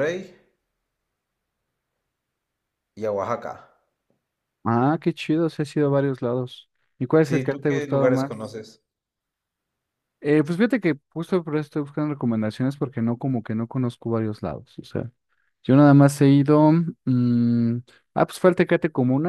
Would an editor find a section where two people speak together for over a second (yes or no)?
yes